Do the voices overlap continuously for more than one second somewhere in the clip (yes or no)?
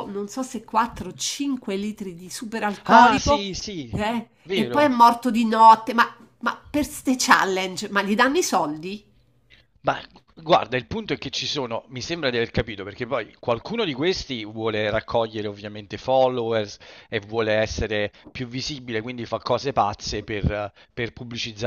no